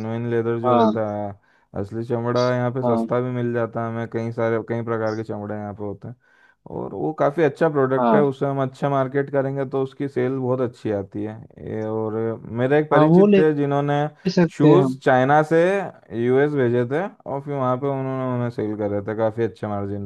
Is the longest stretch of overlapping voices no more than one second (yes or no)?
yes